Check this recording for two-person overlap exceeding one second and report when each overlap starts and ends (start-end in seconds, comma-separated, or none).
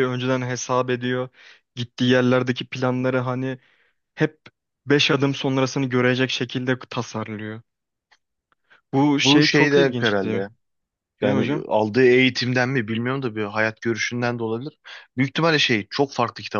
9.2-10.5